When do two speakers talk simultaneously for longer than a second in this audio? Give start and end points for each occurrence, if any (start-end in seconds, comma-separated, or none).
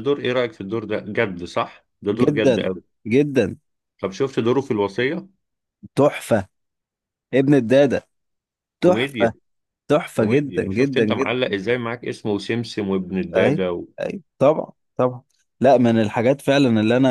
10.1-11.3